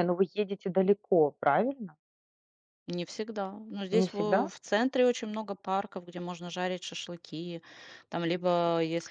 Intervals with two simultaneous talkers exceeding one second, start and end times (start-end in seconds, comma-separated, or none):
none